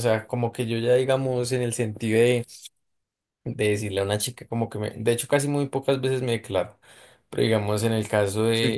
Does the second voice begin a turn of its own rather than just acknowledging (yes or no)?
no